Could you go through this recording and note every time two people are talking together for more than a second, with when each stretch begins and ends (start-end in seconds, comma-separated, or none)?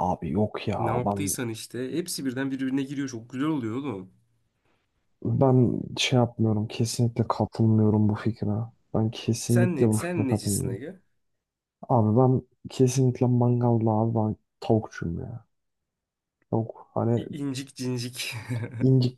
9.5-10.8